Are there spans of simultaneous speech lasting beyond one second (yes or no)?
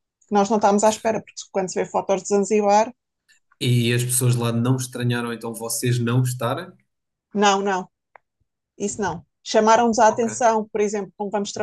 no